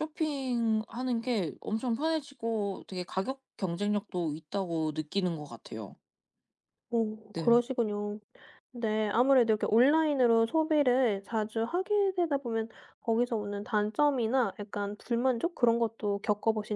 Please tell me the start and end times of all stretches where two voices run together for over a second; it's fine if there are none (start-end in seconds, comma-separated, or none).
none